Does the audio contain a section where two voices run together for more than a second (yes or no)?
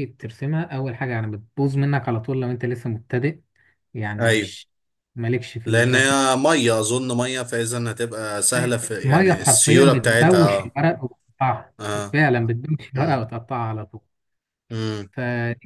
yes